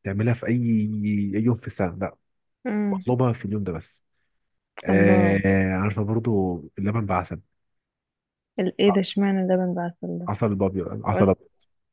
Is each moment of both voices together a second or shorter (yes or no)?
yes